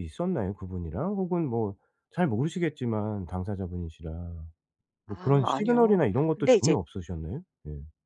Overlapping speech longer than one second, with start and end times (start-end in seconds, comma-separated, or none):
5.1-6.8